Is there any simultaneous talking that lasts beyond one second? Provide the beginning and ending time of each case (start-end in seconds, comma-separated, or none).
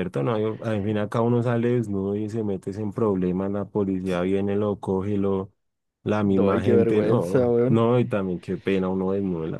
6.2-7.9